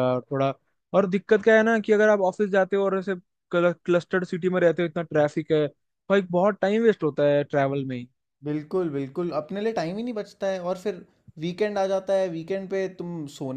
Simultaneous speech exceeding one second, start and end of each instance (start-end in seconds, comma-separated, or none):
none